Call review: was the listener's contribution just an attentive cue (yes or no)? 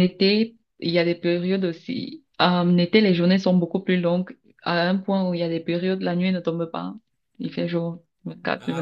no